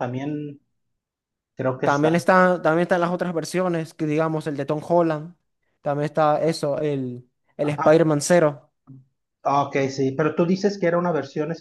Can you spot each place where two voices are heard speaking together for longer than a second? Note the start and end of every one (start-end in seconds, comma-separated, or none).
none